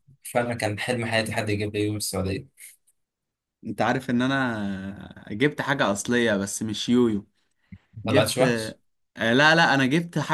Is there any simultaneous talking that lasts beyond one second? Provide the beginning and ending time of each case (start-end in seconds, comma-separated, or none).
none